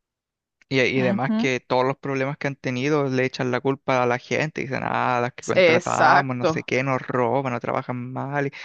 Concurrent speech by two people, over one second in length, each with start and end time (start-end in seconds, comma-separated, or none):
5.4-6.7